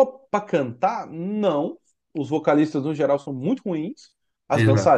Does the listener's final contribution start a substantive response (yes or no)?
no